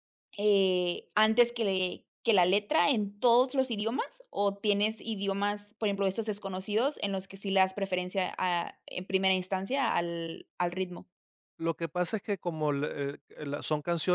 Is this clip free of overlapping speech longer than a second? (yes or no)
yes